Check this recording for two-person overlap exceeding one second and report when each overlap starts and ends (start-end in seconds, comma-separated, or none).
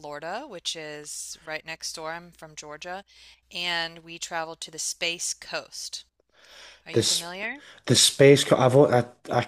none